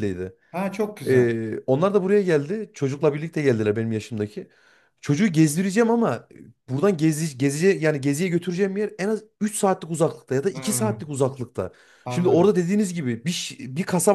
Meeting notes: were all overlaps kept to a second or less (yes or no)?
yes